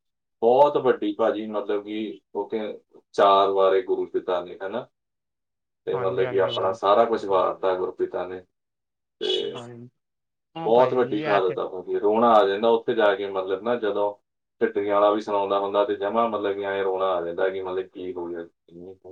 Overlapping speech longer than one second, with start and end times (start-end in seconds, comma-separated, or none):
5.9-7.4